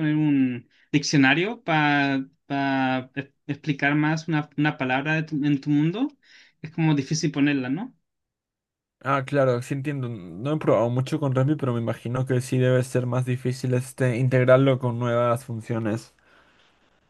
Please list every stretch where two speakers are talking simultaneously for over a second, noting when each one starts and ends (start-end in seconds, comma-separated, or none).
none